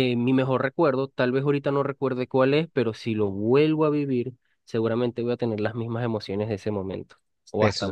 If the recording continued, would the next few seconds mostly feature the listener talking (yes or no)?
yes